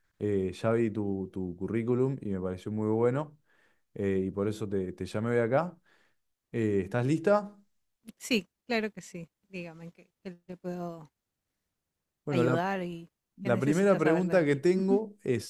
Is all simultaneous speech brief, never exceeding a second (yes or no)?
no